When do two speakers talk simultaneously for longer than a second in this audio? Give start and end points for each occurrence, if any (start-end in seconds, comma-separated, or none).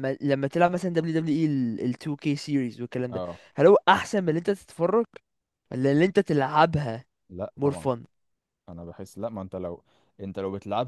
none